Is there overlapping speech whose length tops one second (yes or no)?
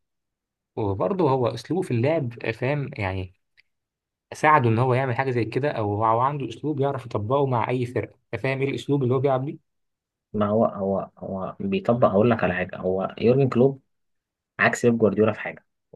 no